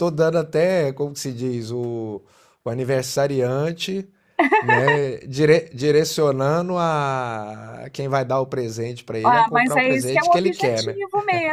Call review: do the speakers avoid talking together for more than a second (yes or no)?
no